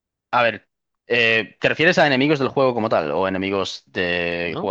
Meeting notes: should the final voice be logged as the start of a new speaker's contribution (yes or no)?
yes